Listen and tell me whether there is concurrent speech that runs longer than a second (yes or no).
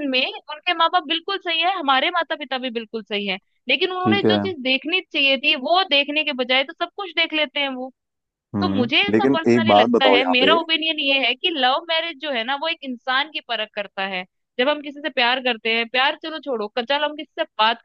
yes